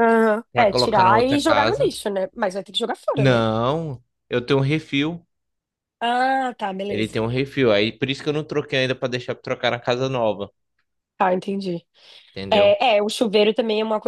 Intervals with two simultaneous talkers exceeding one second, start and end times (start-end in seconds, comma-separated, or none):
0.5-1.9